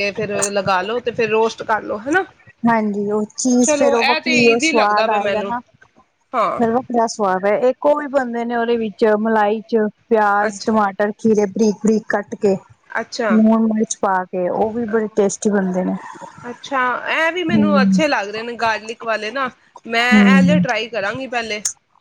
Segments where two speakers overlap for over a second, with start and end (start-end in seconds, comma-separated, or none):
3.7-5.5